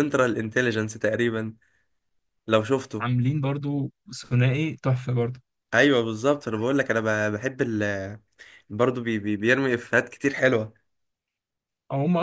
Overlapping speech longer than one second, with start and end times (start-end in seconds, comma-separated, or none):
none